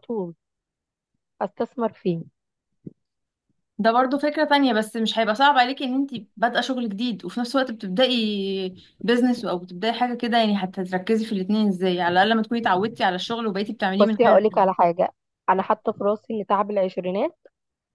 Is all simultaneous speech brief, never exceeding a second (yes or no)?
yes